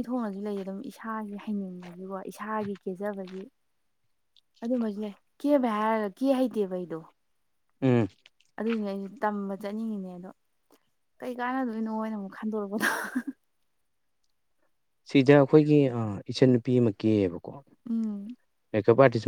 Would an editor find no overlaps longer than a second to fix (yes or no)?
yes